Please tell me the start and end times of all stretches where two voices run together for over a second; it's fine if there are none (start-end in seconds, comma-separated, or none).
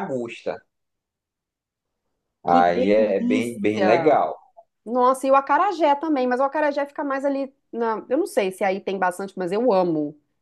none